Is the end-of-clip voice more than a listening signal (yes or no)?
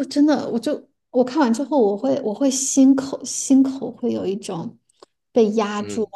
no